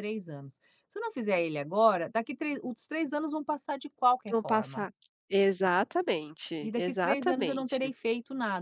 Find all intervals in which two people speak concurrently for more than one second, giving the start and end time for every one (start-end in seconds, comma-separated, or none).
6.6-7.9